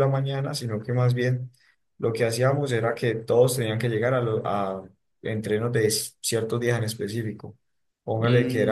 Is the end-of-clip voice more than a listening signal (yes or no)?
no